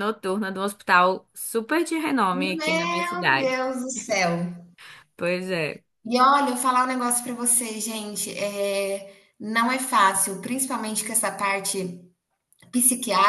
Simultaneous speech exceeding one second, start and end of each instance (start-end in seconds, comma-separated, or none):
2.3-3.6